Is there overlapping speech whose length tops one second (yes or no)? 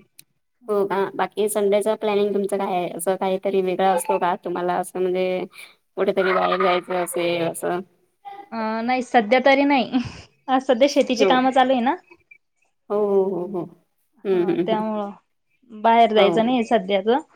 no